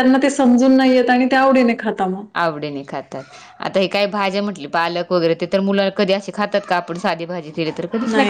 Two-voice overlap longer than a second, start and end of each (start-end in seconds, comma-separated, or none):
none